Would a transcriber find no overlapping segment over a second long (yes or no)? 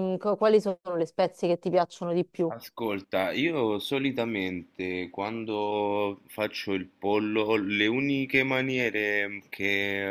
yes